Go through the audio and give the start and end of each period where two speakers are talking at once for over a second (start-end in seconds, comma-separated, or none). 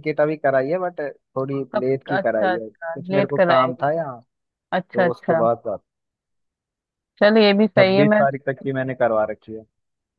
1.7-3.9